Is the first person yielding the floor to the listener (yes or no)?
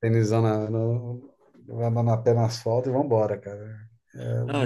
yes